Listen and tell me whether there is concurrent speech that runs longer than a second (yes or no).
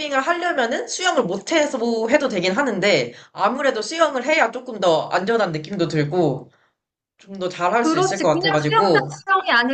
yes